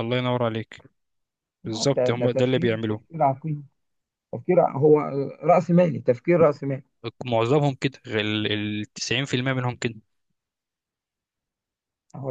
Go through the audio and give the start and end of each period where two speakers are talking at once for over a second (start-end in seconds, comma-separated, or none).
1.7-3.0